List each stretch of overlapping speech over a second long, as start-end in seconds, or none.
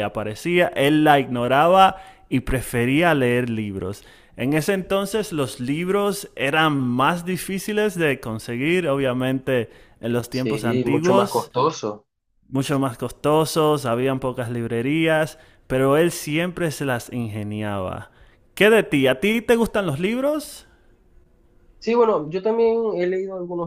10.3-11.5